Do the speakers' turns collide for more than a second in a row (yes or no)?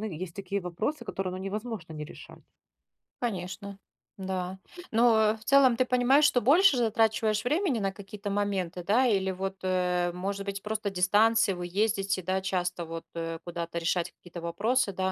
no